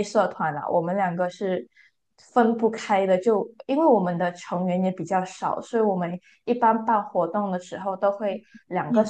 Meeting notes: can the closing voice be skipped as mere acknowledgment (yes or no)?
yes